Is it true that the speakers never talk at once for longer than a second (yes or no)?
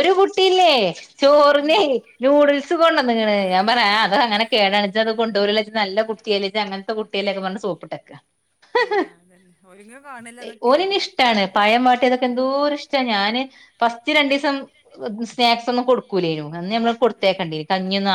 yes